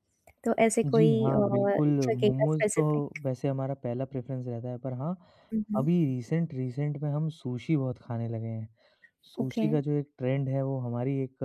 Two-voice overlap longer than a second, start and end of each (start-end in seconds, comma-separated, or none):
0.8-2.8